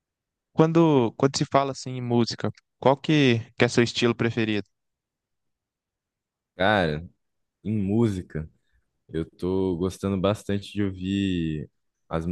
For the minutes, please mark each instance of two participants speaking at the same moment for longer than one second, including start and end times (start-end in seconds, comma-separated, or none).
none